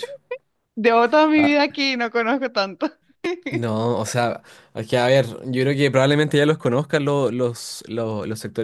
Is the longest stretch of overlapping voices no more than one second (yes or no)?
yes